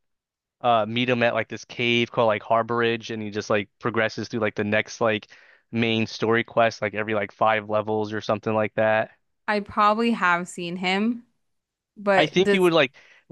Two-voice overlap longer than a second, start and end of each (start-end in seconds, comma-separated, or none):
none